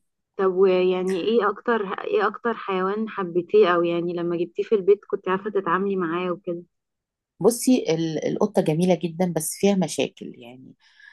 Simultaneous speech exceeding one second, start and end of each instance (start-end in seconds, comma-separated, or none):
none